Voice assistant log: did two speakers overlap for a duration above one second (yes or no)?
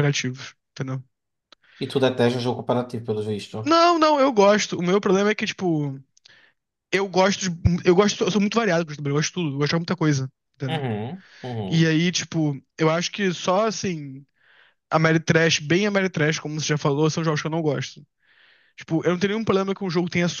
no